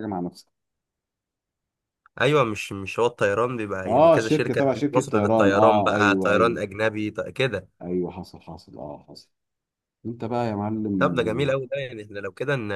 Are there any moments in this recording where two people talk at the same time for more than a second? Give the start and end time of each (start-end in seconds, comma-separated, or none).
3.9-6.6